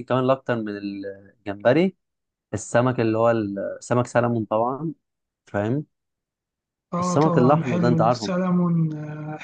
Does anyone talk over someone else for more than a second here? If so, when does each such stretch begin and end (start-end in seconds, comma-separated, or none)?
7.0-8.3